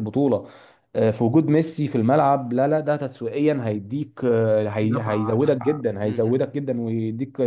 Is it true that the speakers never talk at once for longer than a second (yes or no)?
no